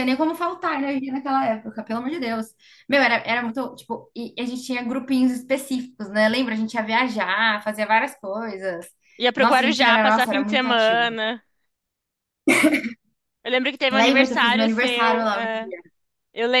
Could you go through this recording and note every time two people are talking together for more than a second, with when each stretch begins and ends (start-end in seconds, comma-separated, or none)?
9.3-11.1, 13.9-15.7